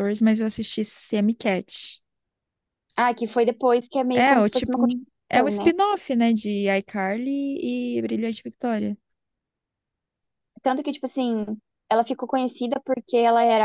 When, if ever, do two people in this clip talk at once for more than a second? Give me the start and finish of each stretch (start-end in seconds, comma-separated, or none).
4.1-5.7